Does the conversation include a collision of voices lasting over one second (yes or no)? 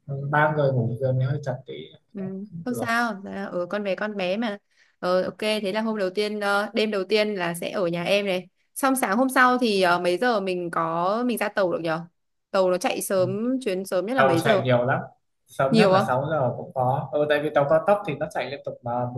no